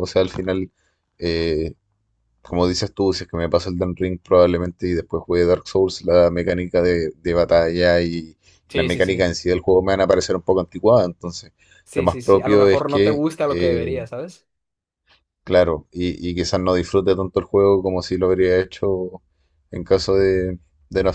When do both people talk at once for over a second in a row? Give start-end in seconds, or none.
11.9-14.0